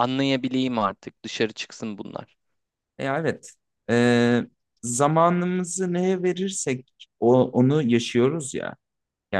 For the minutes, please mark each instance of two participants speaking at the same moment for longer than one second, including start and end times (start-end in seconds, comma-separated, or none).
none